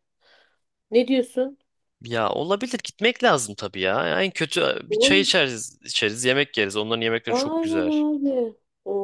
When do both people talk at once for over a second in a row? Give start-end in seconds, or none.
none